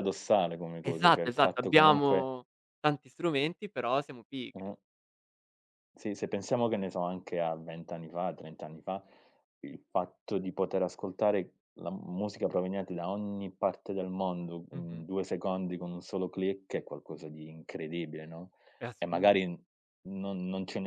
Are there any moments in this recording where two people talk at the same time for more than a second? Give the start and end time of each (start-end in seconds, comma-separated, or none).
0.8-2.3